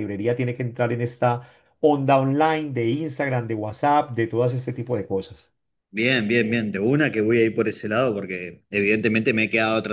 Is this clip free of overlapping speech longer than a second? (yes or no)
yes